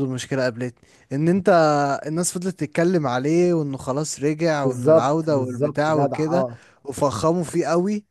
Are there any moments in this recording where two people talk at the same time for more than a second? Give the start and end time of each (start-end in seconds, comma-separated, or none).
4.6-6.5